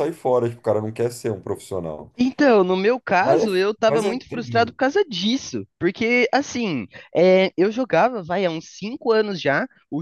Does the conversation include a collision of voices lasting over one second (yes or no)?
yes